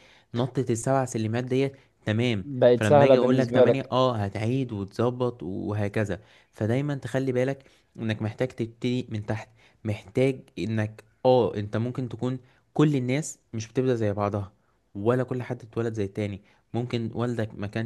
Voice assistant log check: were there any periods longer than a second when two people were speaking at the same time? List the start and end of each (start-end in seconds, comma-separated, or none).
2.4-4.0